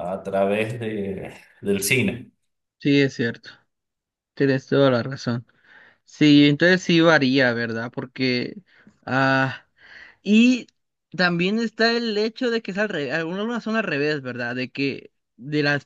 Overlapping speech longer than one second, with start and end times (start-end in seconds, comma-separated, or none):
none